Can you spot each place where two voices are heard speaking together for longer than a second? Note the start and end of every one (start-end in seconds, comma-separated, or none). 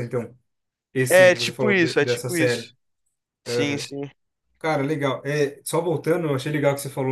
1.1-2.7